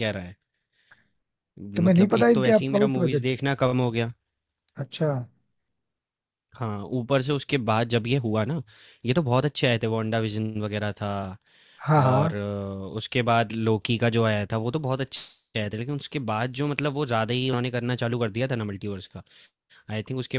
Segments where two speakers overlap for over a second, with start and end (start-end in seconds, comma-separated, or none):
1.8-3.3